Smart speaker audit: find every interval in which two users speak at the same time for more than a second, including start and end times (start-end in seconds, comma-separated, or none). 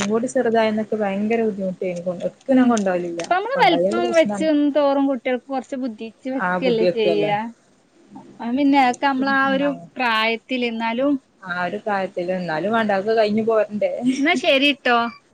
2.5-4.5